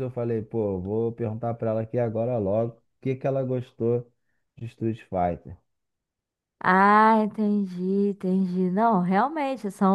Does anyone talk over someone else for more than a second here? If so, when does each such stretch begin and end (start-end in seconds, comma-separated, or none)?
none